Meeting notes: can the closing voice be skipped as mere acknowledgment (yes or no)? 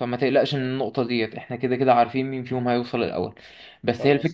yes